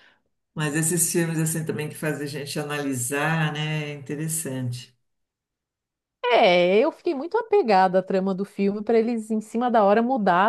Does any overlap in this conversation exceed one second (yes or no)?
no